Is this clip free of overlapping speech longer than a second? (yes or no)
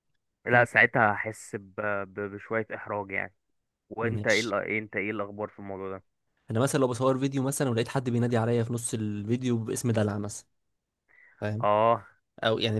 yes